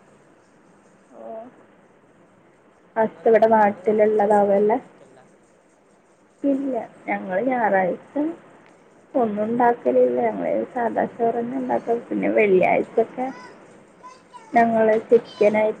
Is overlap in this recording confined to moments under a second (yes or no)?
no